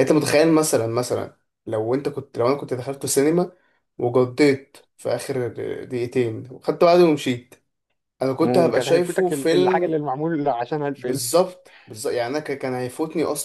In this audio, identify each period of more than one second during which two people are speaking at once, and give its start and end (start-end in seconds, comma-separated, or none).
8.4-10.0